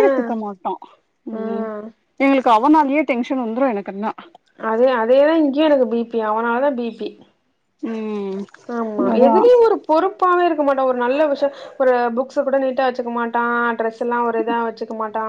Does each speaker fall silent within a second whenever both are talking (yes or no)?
yes